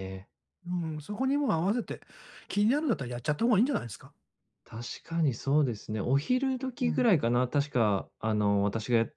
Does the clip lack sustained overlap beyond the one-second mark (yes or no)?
yes